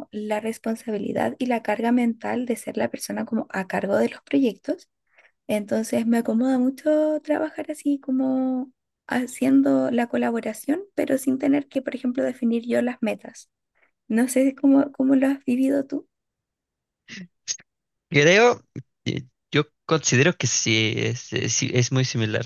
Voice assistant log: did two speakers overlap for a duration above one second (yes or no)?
no